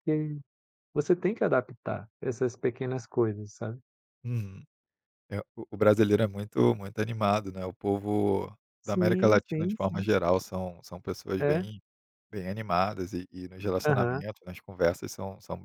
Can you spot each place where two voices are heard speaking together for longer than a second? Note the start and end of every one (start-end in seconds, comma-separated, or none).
8.8-10.1